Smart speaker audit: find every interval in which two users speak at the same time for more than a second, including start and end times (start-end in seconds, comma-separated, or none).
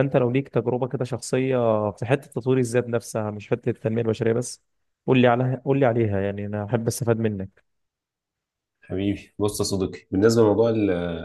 none